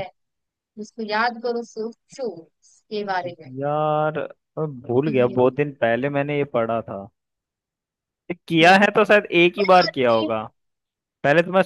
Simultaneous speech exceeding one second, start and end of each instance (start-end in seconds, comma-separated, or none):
none